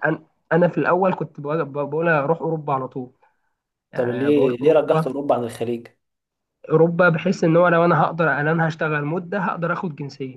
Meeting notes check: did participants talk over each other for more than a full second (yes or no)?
yes